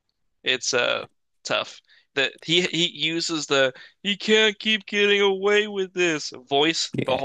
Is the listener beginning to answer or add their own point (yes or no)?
yes